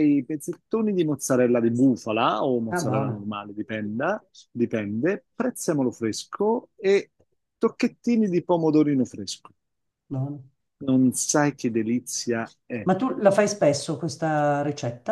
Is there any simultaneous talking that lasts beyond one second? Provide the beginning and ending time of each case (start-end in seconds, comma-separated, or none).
none